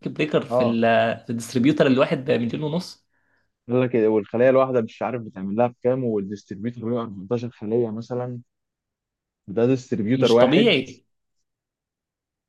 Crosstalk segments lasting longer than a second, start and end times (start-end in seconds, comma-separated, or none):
none